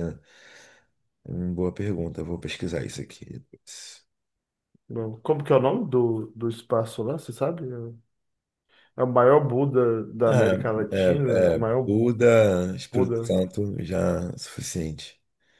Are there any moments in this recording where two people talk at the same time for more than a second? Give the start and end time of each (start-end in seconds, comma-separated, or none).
10.2-11.9